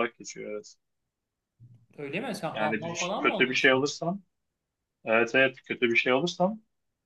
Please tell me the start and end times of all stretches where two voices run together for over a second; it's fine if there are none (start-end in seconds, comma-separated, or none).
2.5-3.9